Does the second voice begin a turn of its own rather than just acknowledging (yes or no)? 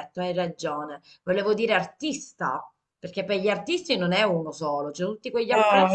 yes